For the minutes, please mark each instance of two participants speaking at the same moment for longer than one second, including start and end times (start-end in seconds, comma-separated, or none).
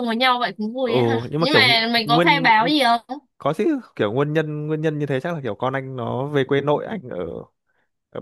0.8-2.5